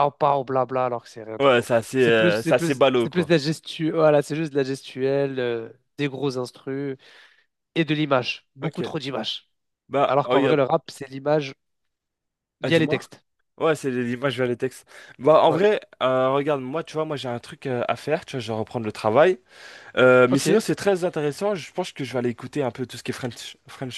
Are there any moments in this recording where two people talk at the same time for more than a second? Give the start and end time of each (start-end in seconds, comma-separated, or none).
1.4-3.3